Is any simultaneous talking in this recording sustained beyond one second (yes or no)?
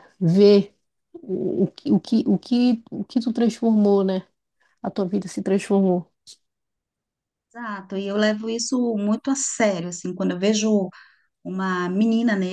no